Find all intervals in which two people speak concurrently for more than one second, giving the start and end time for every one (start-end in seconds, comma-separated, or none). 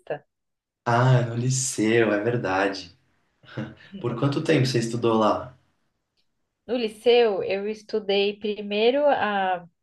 none